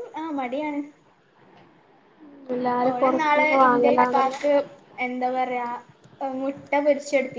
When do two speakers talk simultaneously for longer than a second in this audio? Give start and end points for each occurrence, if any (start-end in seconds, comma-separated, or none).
2.9-4.4